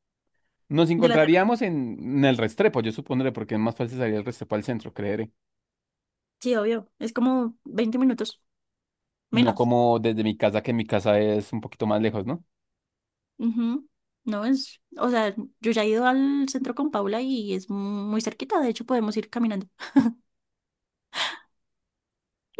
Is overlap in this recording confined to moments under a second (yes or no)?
yes